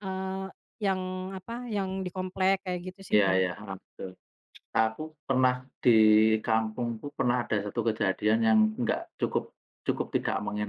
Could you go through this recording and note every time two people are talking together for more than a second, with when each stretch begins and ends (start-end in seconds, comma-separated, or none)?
none